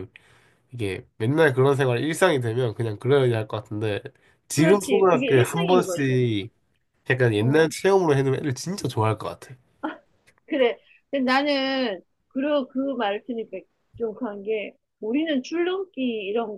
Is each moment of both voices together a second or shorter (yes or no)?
no